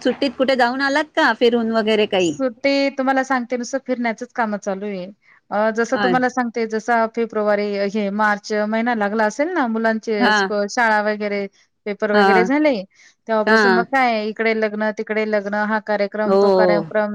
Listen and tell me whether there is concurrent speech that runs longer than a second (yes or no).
no